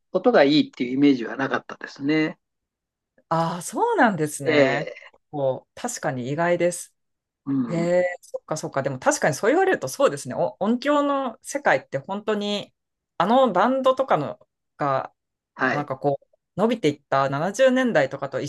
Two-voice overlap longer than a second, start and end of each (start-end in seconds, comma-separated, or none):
none